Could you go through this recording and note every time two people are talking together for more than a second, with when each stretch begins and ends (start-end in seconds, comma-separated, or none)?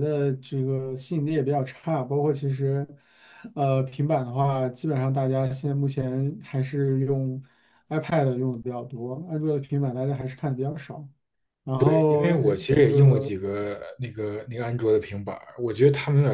11.8-13.3